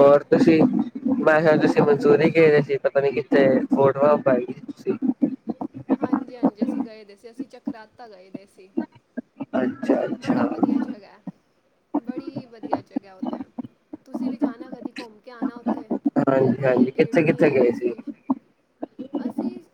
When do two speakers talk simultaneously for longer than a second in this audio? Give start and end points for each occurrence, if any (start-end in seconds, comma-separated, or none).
16.3-17.7